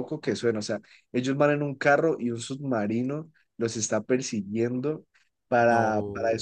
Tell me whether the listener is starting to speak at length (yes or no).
no